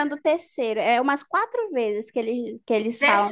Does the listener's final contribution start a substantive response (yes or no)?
yes